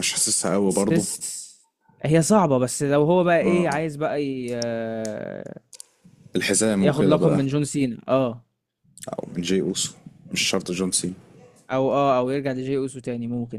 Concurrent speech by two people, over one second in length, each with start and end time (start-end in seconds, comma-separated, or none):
none